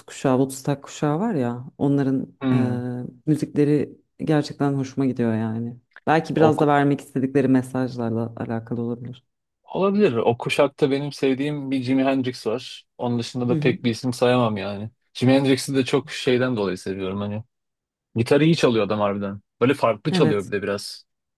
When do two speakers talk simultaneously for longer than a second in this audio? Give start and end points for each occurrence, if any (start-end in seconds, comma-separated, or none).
none